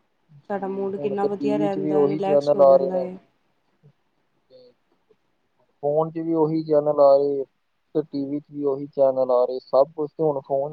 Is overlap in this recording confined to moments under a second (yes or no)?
no